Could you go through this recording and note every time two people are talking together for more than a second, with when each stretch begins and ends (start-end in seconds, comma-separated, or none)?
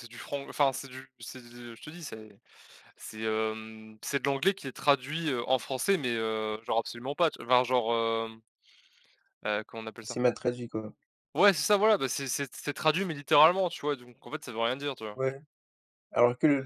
none